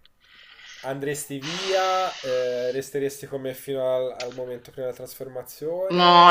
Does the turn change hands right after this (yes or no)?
yes